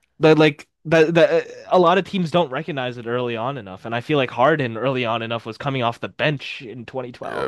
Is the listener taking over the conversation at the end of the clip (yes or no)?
yes